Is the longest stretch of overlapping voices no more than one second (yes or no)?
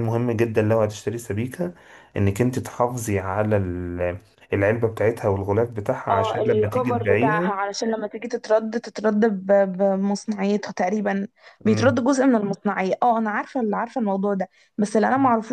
no